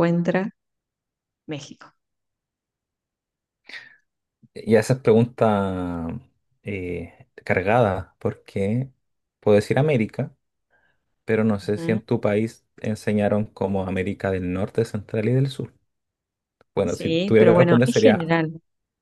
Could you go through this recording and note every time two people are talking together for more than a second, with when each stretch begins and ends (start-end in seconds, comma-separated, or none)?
16.8-18.3